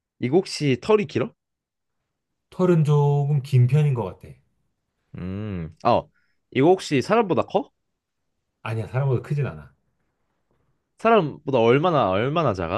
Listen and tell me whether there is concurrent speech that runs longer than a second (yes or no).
no